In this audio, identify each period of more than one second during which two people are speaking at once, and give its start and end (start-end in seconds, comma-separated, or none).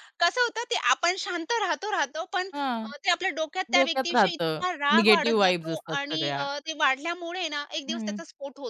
3.8-6.5